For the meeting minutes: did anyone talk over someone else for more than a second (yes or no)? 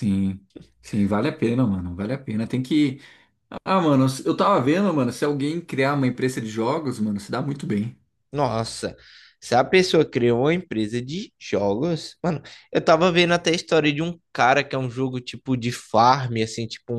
no